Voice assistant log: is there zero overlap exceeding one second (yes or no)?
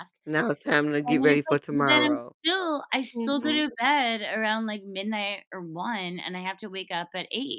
no